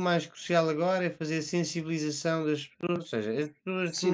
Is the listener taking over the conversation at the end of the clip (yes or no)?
yes